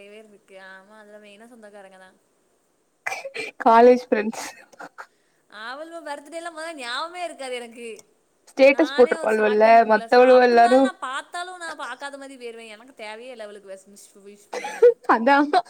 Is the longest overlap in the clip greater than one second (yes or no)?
yes